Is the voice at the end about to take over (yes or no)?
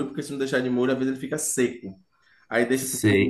yes